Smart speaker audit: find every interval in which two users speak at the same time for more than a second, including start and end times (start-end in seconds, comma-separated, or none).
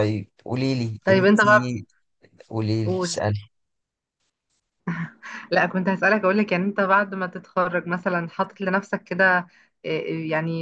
none